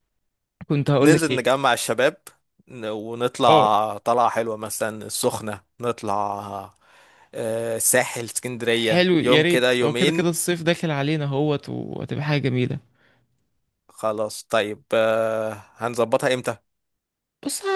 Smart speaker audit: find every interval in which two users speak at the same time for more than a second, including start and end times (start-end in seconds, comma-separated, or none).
8.7-10.3